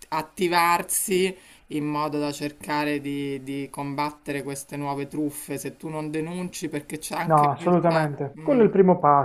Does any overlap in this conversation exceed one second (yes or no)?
yes